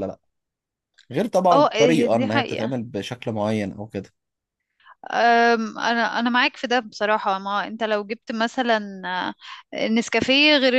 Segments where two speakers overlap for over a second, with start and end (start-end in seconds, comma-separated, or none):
1.5-2.7